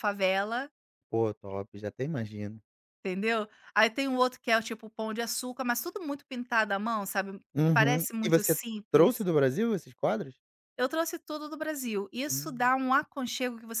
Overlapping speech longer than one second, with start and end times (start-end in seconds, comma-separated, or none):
7.5-9.3